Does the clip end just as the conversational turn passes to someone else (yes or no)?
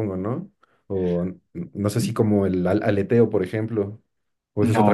yes